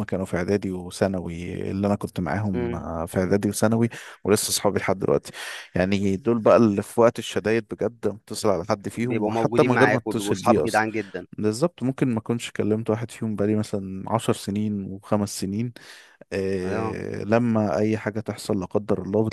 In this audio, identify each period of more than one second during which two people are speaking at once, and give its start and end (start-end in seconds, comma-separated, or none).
8.9-10.8